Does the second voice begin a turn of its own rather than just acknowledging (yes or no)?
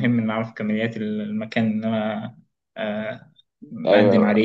yes